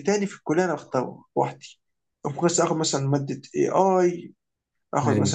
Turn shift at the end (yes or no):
no